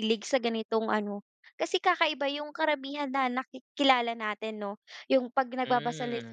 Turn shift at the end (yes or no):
no